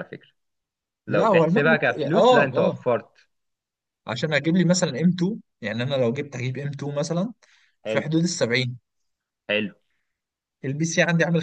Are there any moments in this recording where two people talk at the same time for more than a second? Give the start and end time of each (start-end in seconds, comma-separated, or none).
1.1-2.7